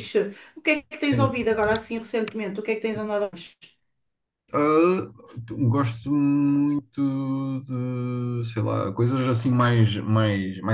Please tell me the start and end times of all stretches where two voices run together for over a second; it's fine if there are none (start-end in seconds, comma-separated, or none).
none